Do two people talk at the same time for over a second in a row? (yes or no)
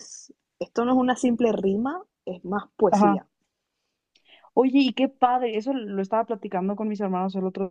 no